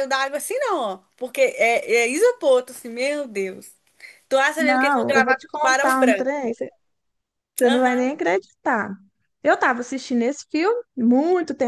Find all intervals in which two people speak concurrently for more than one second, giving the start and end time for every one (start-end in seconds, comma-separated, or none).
4.6-6.5